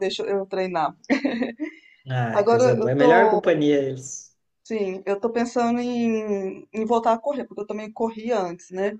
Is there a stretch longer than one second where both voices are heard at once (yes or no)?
yes